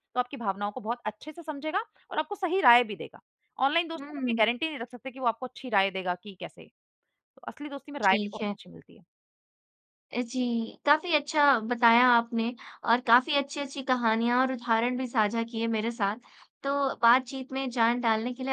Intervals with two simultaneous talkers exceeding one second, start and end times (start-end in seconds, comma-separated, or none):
none